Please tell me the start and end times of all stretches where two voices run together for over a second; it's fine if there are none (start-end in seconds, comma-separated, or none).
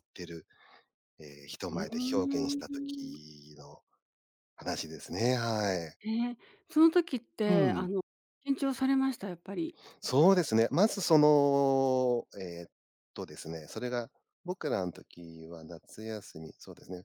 1.7-3.2